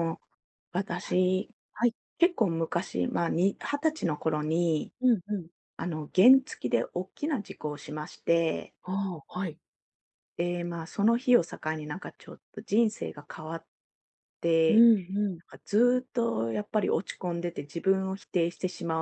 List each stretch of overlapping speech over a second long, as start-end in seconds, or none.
none